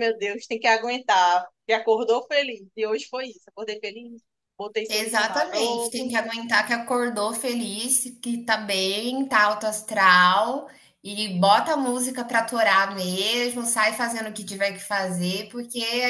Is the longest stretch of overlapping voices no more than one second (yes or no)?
no